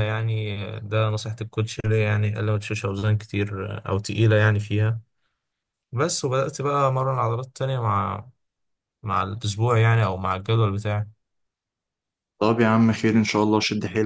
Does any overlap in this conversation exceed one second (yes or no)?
no